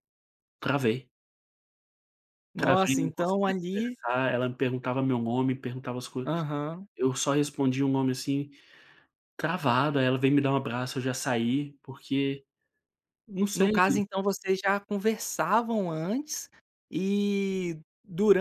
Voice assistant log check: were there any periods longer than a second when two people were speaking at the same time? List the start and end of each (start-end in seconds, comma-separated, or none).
2.6-4.0